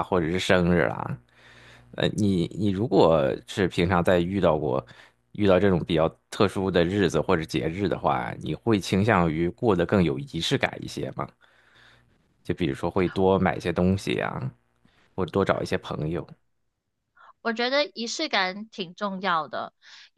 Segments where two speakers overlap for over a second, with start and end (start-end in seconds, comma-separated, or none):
none